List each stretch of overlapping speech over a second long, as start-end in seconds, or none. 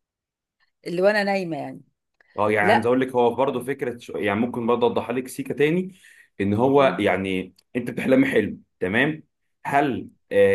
none